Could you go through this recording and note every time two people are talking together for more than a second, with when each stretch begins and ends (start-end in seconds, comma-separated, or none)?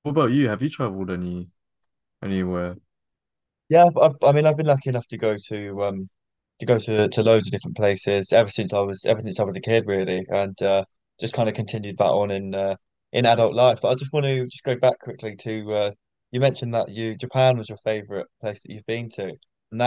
none